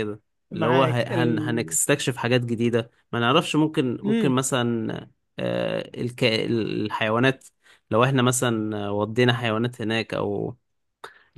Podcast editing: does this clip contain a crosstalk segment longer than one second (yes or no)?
yes